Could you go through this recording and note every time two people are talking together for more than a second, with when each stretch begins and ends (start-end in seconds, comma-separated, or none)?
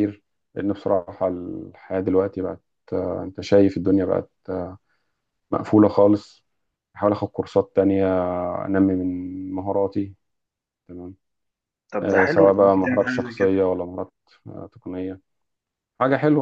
12.0-13.6